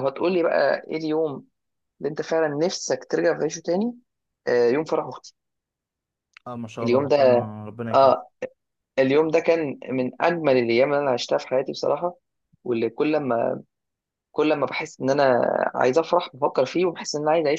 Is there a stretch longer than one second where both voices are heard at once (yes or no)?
no